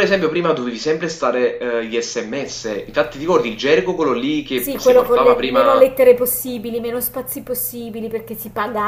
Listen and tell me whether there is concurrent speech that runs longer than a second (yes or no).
yes